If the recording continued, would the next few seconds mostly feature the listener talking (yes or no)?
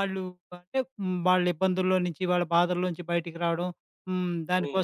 no